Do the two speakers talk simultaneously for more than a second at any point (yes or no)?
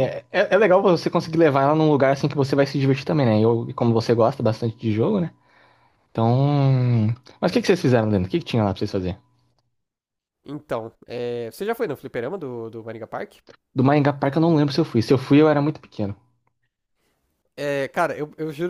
no